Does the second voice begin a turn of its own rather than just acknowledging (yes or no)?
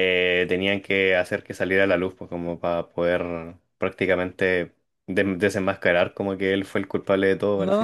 yes